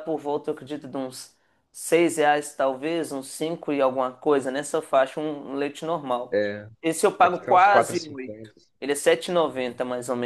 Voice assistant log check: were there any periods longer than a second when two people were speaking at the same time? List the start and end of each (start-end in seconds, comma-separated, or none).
7.2-8.5